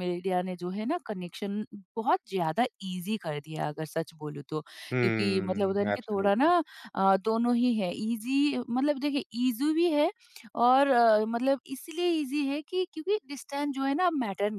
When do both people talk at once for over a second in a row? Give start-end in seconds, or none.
5.0-6.5